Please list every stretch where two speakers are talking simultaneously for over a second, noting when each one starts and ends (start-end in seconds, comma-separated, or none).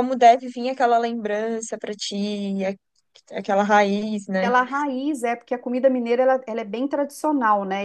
none